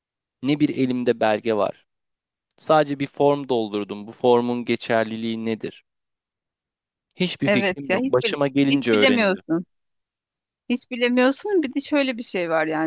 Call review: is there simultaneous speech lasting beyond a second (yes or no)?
yes